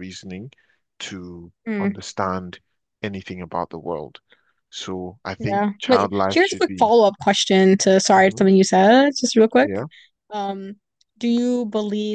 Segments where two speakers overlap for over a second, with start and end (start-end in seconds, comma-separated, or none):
5.4-6.9